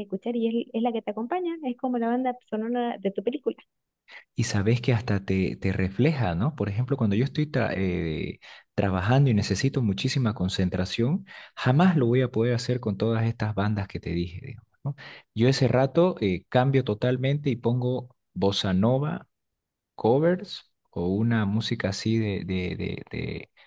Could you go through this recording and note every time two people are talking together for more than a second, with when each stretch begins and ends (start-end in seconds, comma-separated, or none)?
none